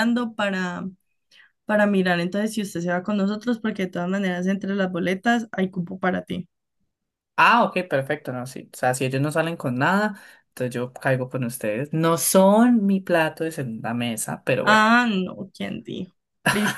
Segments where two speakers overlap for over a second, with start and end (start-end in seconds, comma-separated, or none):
none